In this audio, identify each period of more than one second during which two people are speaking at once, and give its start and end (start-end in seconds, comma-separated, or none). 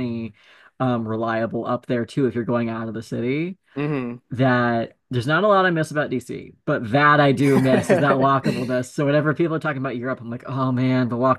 7.4-8.7